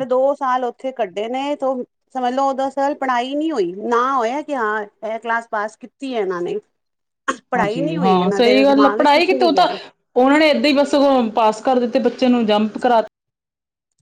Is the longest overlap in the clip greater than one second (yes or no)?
yes